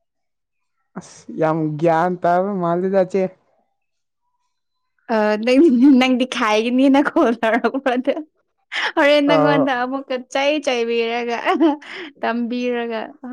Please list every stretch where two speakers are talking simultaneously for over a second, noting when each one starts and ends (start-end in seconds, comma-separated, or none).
none